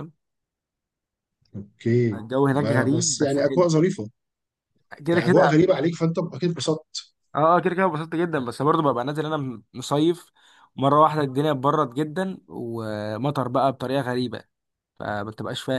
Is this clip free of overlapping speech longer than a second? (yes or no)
no